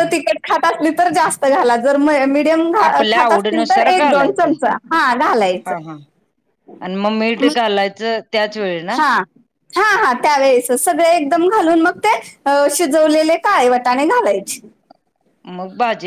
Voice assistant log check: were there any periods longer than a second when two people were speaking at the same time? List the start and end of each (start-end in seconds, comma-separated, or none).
3.1-4.5